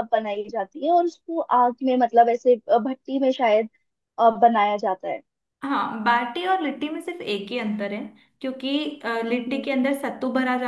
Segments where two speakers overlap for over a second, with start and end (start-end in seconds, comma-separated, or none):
none